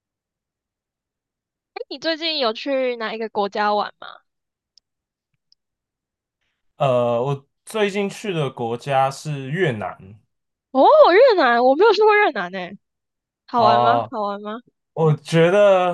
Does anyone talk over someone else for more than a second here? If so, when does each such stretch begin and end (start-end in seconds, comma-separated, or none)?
none